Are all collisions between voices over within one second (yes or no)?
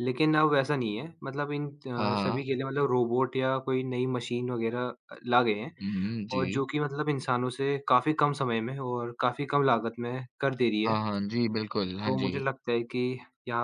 yes